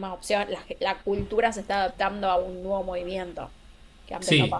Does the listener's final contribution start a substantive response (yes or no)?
yes